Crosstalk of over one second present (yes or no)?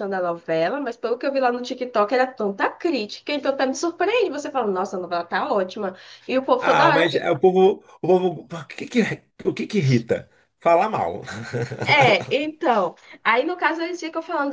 no